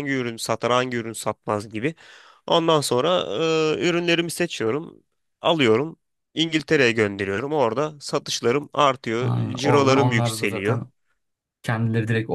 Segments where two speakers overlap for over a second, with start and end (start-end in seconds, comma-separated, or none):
9.2-10.8